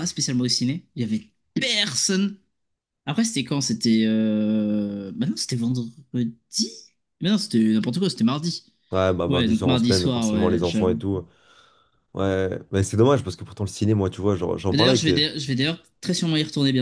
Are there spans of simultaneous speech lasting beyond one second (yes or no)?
yes